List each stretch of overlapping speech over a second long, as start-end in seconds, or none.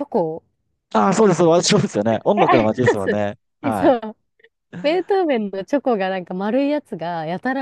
2.2-4.0